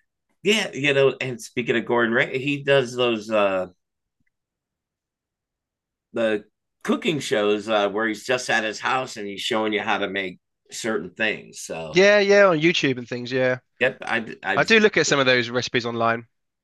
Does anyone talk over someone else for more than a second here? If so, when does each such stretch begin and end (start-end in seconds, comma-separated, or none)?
none